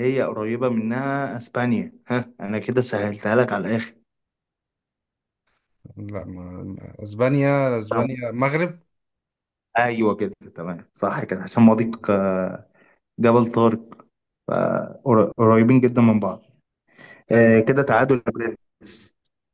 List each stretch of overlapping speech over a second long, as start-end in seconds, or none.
none